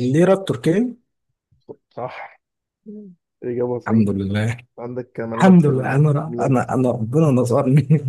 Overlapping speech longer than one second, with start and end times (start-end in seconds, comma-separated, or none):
5.3-6.6